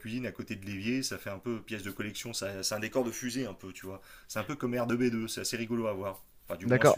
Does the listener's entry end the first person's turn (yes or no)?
yes